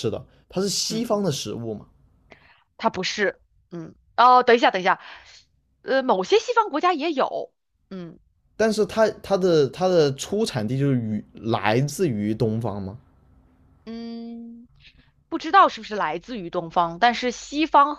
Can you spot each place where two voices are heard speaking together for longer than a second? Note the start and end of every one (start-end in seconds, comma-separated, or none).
none